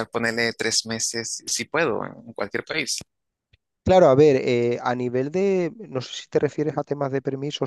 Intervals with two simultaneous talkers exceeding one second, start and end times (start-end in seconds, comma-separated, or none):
none